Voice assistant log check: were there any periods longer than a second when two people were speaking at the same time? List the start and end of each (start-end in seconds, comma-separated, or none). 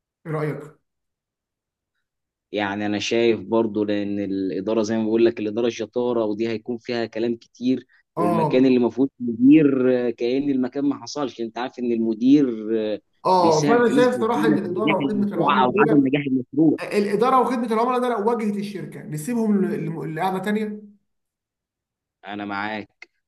13.4-16.1